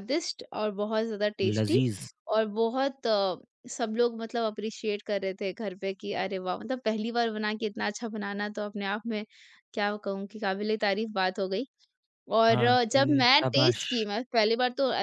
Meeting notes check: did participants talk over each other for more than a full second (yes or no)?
yes